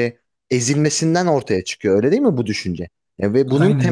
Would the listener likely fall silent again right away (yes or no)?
yes